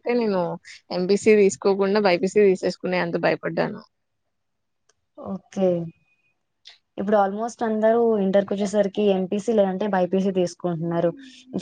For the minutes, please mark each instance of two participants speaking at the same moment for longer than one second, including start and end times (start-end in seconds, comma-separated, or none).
none